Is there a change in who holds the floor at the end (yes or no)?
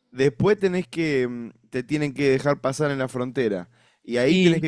no